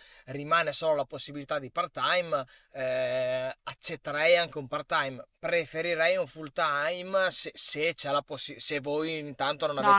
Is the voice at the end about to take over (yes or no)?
yes